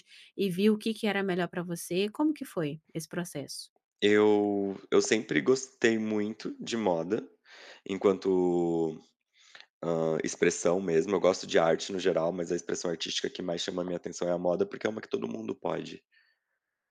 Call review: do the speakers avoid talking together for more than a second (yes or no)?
yes